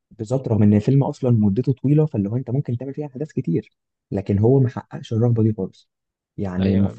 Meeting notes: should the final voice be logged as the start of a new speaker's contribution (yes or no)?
no